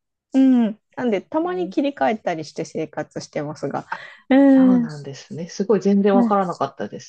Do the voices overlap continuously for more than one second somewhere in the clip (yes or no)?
no